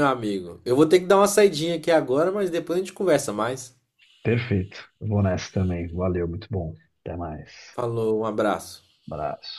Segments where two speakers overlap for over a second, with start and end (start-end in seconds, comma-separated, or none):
none